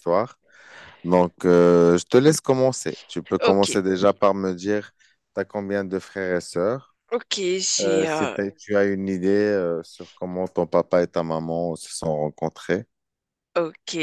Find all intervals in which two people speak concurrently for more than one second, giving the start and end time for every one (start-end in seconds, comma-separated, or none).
none